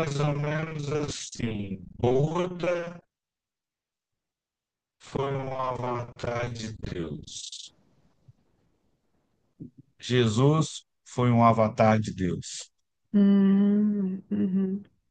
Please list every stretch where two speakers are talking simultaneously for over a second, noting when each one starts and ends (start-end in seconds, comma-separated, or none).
none